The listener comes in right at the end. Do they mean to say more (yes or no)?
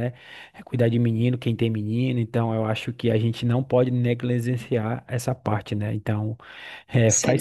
no